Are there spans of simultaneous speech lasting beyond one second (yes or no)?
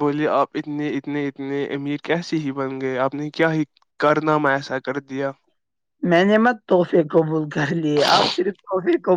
no